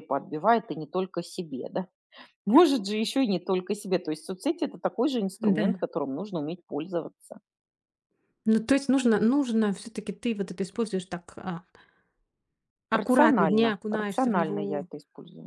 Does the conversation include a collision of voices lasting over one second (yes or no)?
yes